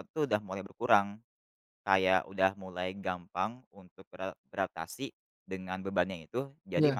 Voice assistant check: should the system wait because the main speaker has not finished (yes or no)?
yes